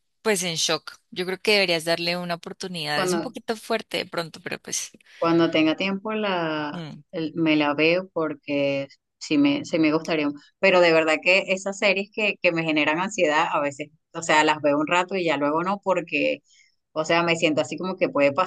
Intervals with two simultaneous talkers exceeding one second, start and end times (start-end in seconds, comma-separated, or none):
none